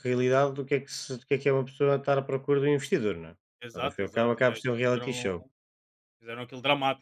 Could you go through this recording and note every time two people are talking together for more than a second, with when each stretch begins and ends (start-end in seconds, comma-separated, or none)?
3.7-5.3